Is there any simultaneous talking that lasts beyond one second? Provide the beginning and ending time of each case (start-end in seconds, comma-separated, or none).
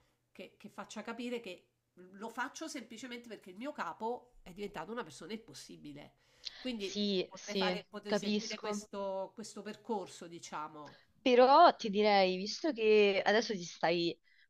6.8-8.8